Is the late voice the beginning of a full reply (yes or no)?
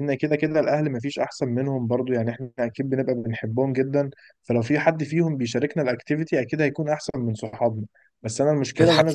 no